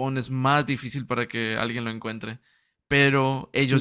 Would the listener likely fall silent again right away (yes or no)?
yes